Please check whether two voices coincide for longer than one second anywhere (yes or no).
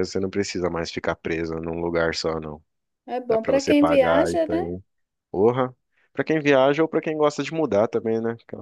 yes